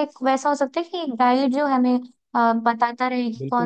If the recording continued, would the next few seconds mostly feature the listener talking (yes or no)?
yes